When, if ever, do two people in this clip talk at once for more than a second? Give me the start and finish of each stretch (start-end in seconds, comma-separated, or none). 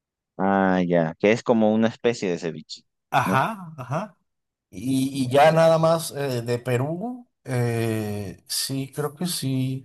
none